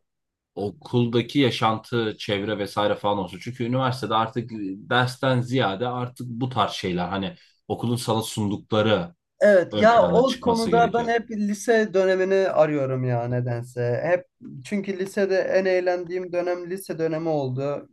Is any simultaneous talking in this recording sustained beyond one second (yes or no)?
yes